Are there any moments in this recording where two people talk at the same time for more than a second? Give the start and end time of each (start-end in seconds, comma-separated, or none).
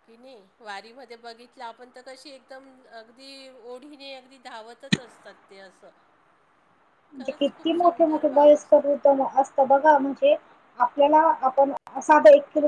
7.2-9.0